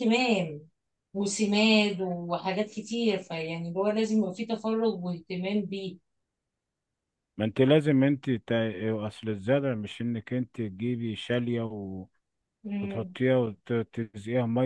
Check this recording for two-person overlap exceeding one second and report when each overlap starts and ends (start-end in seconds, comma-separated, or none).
none